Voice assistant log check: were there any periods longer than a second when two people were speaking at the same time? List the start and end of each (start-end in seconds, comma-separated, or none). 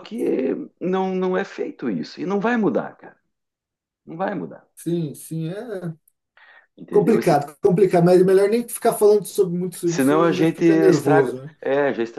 9.8-11.5